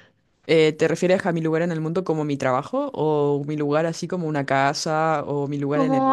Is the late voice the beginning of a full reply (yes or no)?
yes